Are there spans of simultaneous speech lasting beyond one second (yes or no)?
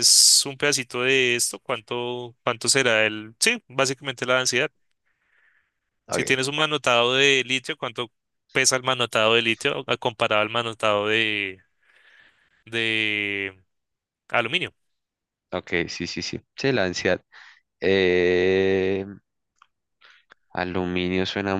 no